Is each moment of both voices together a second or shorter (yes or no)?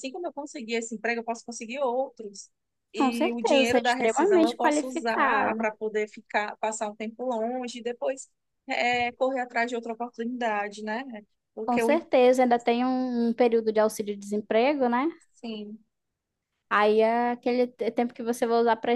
no